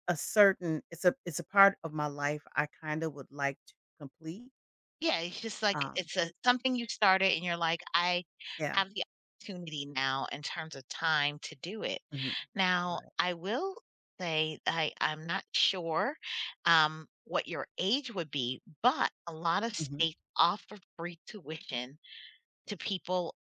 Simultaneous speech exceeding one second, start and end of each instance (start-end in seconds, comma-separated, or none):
none